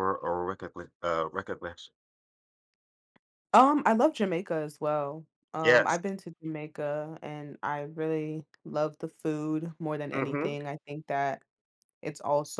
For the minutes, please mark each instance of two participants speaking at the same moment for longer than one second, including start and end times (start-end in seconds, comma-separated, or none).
none